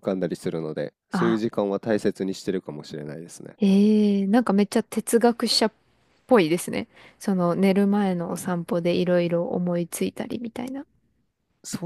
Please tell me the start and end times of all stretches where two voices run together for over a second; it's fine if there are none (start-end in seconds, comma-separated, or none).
none